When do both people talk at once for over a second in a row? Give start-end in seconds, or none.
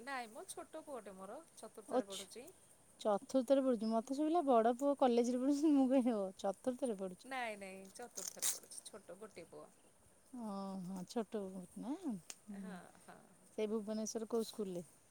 none